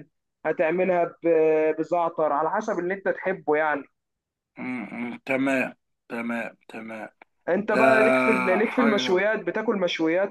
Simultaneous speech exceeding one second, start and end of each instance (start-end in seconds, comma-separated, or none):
none